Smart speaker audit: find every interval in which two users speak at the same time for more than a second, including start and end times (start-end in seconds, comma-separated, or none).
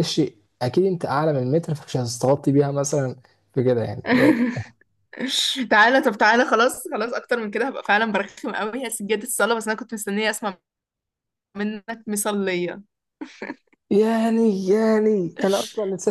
none